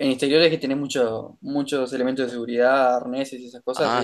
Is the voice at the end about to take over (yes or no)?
yes